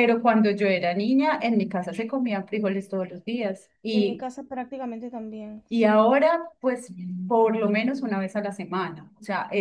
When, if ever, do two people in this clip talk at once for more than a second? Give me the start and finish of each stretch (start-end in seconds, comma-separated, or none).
none